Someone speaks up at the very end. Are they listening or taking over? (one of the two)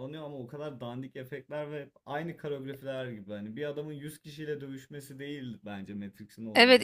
taking over